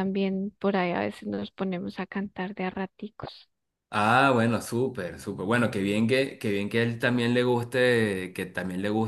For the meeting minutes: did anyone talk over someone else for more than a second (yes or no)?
no